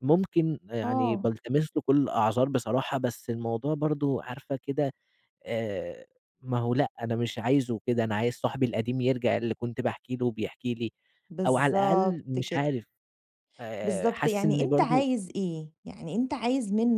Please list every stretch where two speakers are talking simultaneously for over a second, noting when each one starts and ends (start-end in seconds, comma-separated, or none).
11.4-12.7, 13.8-15.1